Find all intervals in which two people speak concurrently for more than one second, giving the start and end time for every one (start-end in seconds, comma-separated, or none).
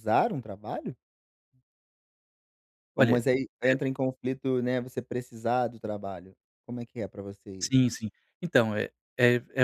none